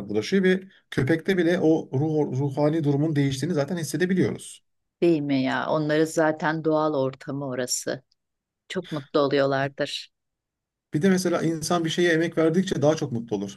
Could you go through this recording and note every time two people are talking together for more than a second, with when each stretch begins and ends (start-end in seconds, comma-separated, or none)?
none